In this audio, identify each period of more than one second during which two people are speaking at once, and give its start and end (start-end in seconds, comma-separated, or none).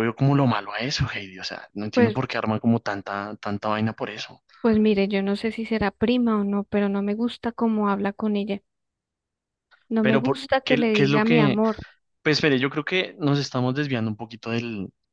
10.0-11.6